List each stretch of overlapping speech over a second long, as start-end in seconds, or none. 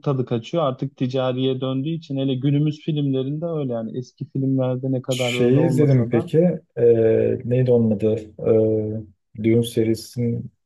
5.1-6.3